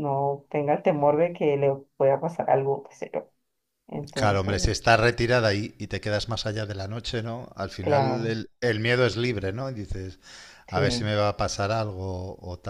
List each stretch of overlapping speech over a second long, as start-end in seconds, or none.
none